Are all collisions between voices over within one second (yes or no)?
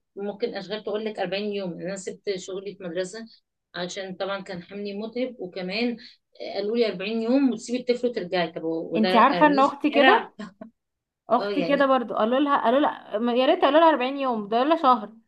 no